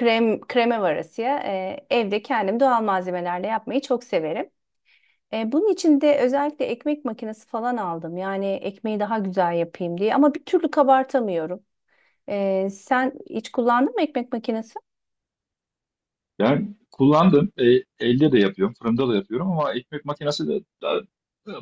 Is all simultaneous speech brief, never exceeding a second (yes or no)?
yes